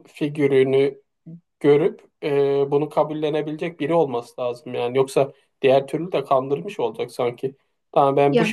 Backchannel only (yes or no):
yes